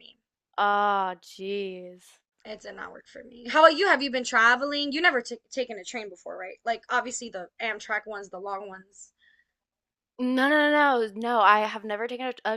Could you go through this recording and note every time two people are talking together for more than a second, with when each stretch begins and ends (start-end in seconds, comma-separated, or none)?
none